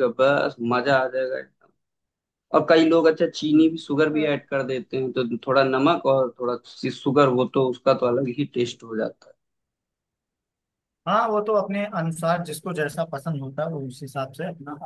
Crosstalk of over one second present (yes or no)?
no